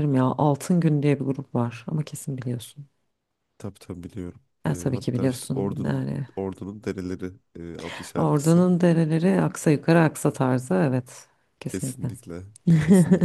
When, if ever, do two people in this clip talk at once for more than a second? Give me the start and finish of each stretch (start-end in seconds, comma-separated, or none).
4.7-6.3